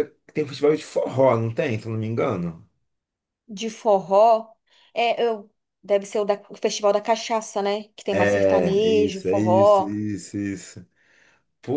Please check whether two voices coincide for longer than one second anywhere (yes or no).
yes